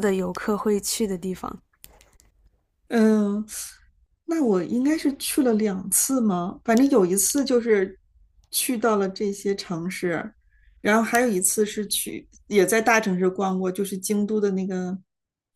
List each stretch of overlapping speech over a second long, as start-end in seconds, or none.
none